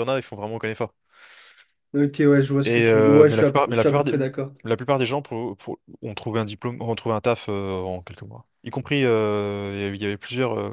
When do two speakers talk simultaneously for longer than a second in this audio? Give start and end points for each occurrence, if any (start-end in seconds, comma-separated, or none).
2.6-4.1